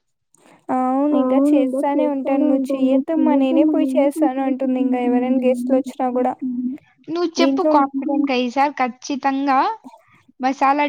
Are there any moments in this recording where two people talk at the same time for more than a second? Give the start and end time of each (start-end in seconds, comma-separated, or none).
1.2-2.9